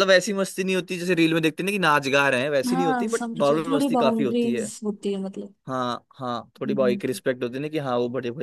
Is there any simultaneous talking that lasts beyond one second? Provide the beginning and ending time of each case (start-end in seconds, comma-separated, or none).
2.7-4.6